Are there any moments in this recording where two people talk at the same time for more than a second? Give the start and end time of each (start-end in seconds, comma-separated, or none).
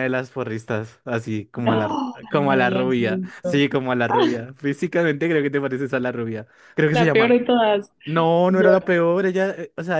1.6-3.7